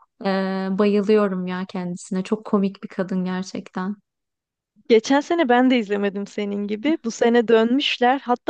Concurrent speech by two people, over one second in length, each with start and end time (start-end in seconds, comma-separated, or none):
none